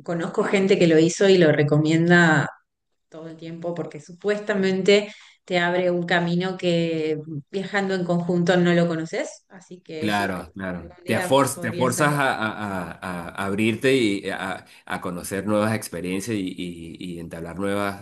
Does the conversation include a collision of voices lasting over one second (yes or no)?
yes